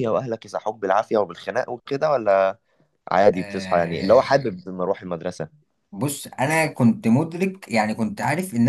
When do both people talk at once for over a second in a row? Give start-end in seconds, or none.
3.3-4.6